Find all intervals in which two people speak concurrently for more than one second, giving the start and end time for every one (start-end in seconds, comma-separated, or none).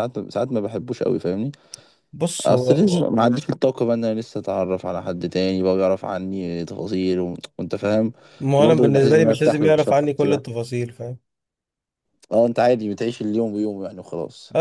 8.6-10.4